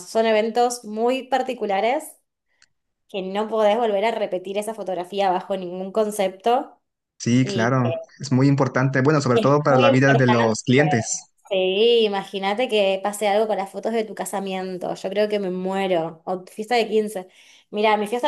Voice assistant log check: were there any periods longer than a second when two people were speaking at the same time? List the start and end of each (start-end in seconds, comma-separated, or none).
9.3-10.6